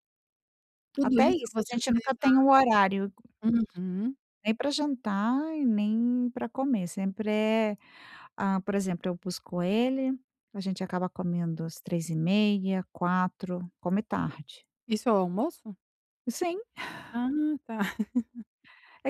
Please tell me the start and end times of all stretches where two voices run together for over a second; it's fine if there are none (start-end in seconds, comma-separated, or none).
1.0-2.5